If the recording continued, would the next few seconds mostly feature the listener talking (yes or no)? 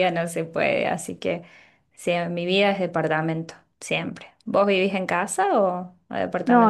yes